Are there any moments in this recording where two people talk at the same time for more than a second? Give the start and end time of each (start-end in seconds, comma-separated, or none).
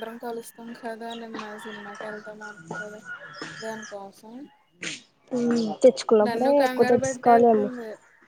6.3-7.7